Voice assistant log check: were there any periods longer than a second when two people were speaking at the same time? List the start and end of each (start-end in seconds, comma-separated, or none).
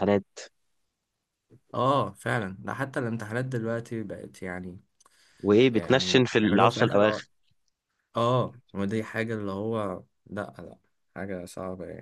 5.7-7.2